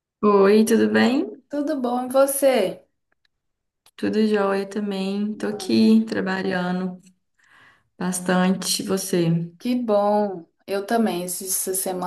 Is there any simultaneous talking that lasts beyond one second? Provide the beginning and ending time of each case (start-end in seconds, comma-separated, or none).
none